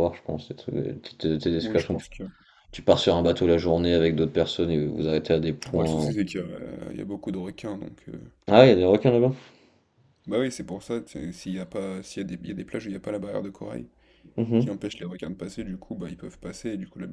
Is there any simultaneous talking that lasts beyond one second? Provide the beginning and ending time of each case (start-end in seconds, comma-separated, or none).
none